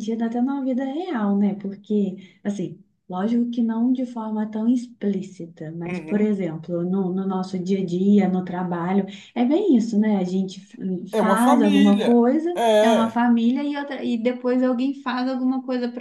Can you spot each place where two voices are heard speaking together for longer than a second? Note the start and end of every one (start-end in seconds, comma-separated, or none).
11.1-13.2